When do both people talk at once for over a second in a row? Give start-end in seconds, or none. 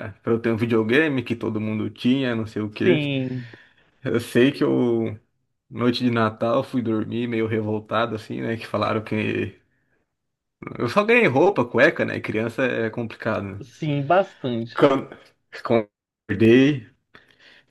none